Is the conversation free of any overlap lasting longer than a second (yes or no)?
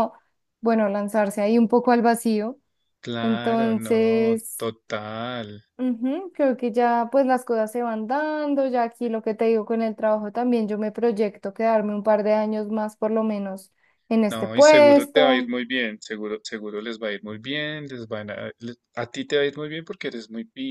no